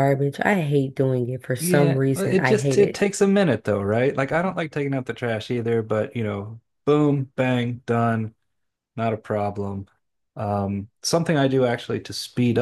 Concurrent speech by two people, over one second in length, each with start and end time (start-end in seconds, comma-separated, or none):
1.6-3.0